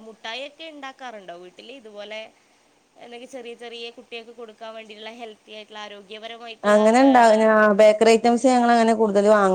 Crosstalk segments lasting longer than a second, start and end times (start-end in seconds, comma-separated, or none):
none